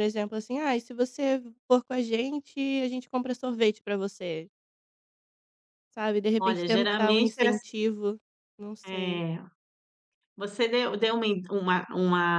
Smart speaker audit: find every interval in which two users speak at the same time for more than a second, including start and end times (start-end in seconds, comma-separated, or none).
6.4-7.6